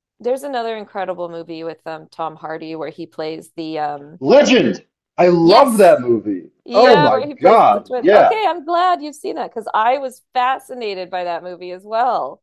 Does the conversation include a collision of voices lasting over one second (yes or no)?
yes